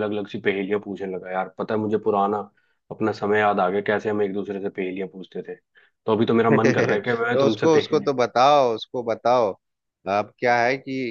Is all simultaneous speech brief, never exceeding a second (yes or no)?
no